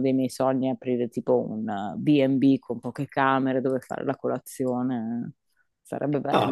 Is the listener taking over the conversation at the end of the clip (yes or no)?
yes